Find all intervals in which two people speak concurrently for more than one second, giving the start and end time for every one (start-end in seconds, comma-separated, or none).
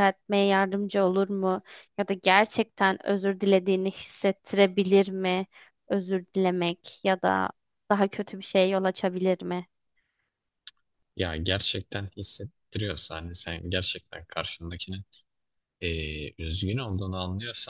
none